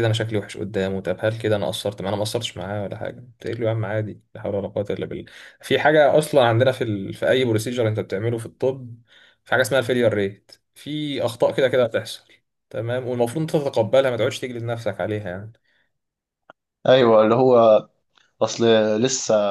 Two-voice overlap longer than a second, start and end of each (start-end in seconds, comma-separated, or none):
none